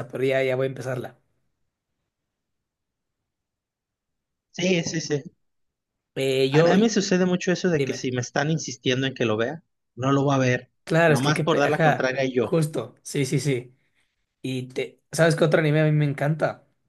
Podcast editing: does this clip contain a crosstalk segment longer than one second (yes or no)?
yes